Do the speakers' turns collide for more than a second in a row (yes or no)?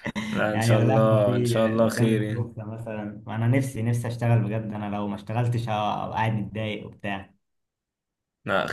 yes